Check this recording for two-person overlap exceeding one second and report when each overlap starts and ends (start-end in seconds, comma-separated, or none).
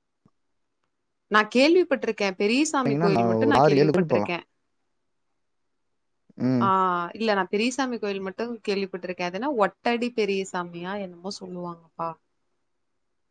2.7-4.3